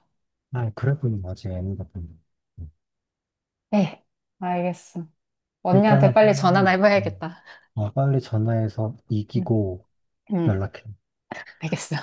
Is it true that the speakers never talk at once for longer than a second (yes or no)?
no